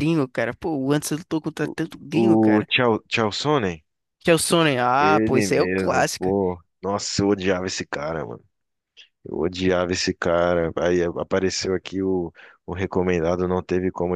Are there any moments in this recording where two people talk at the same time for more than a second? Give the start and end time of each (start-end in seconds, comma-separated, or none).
5.0-6.3